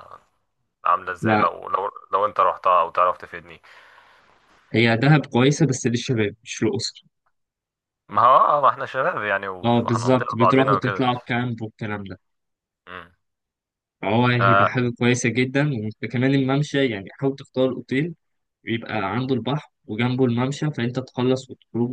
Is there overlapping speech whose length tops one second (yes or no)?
yes